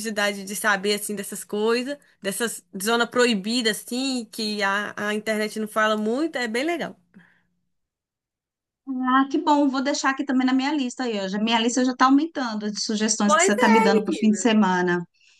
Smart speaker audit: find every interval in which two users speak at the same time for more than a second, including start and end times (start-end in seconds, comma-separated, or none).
13.2-14.6